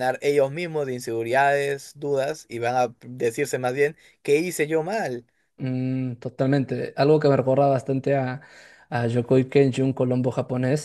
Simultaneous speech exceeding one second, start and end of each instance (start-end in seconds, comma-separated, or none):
none